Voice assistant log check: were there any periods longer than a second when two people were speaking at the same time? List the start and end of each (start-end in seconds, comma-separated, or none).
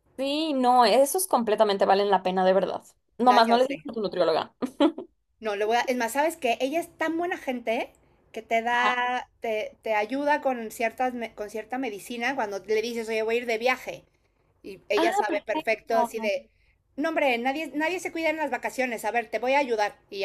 14.9-16.3